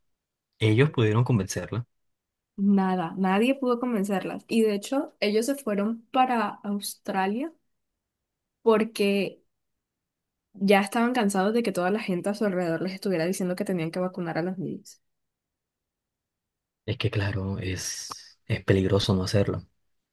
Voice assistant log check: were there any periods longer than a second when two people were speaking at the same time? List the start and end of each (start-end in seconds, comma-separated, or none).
none